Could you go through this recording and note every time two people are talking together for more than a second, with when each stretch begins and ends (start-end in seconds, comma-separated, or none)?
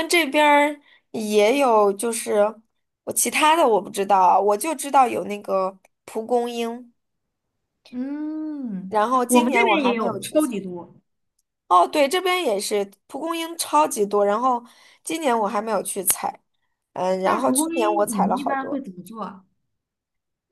8.9-10.5, 17.2-18.8